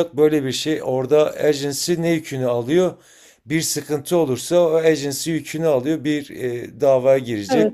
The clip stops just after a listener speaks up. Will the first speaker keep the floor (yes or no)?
yes